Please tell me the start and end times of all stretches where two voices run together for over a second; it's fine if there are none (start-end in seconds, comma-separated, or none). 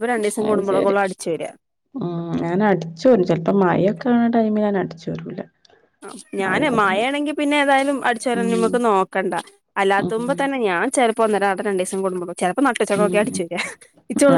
none